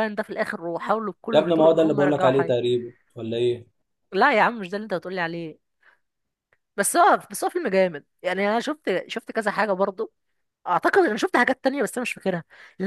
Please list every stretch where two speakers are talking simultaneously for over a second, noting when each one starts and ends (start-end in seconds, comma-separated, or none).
1.3-2.5